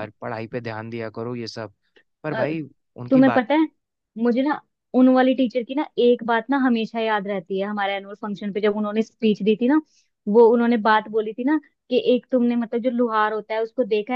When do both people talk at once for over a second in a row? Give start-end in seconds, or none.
none